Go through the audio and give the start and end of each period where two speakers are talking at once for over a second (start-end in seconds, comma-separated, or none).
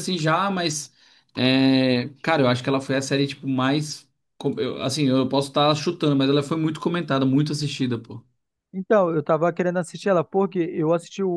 none